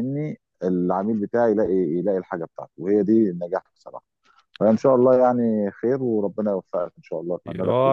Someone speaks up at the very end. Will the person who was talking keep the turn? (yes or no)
no